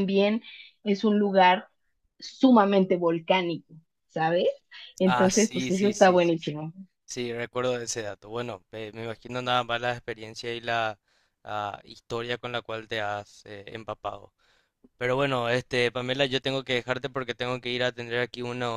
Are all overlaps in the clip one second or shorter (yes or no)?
no